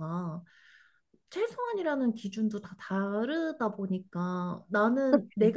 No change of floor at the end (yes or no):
yes